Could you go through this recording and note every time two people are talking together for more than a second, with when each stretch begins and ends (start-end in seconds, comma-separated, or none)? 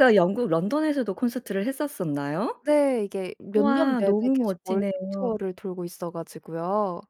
3.5-5.3